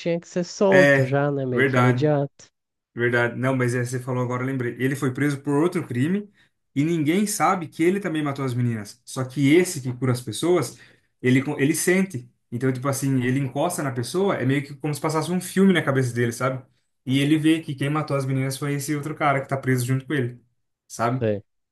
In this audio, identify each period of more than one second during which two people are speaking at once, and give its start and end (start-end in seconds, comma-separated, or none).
0.7-2.1